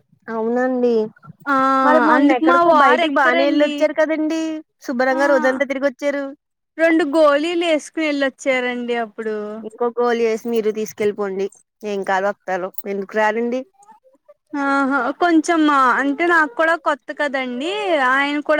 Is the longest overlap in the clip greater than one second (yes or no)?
yes